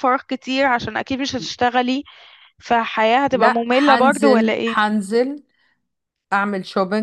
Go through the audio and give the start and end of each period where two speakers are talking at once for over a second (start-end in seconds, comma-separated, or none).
3.3-4.8